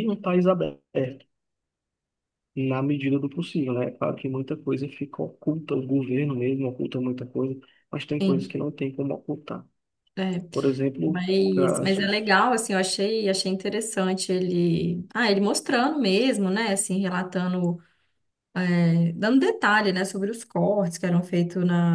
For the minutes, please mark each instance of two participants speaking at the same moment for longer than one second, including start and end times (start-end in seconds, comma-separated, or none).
11.0-12.3